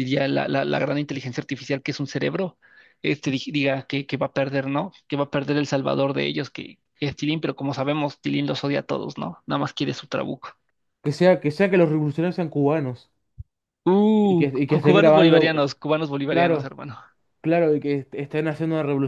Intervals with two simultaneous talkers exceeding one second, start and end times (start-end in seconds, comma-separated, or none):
14.2-15.6